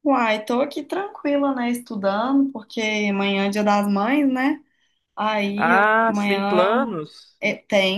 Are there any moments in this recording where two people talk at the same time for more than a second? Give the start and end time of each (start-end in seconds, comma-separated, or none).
5.5-7.0